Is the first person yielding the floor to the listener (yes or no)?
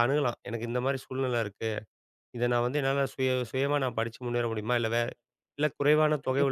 yes